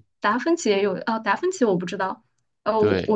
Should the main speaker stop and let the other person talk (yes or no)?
no